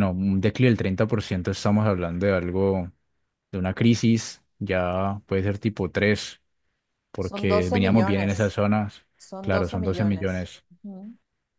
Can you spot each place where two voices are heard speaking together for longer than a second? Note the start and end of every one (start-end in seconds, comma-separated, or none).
7.2-8.6, 9.4-10.6